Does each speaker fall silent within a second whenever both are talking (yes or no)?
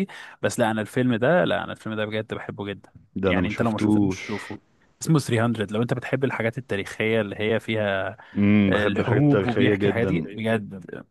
no